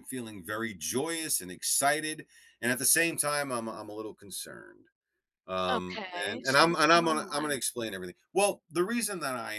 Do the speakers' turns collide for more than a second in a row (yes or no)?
yes